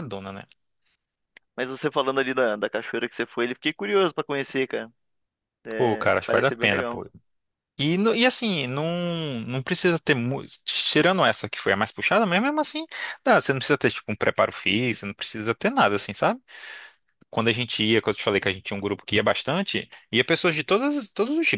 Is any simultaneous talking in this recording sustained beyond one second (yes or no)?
yes